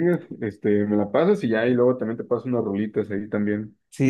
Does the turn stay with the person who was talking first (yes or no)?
no